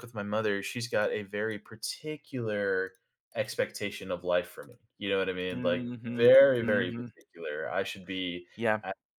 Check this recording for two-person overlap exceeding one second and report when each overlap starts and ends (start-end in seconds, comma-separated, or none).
5.5-7.1